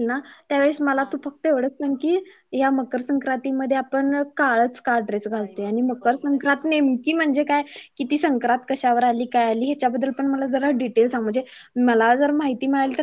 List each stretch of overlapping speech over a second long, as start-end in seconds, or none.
5.3-6.8